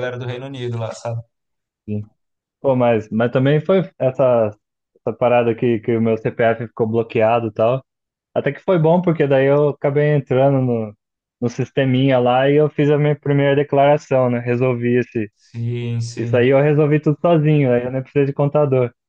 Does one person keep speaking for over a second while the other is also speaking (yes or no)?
no